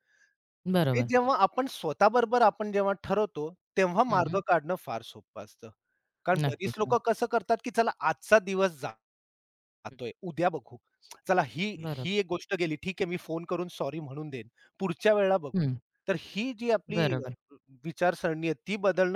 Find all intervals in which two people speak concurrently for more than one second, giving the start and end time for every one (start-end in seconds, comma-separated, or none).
none